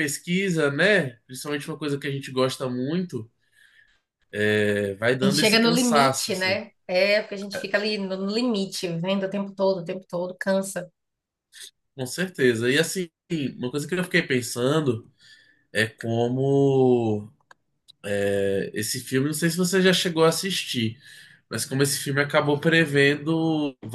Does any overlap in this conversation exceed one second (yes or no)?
yes